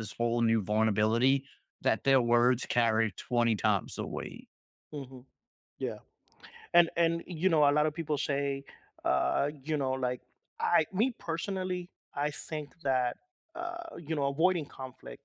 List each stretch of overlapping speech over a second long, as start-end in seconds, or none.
none